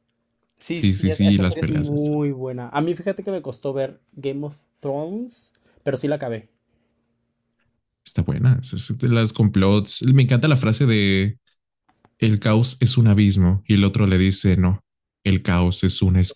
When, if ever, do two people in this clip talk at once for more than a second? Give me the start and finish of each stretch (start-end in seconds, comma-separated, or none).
0.7-2.1